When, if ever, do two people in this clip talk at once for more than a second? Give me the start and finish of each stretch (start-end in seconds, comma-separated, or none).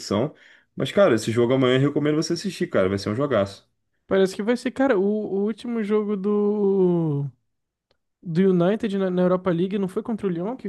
none